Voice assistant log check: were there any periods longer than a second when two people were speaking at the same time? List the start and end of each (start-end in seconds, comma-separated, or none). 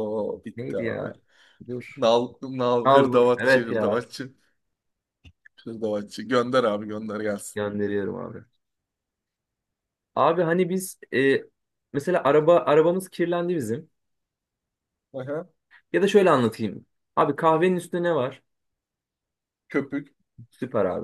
2.8-4.0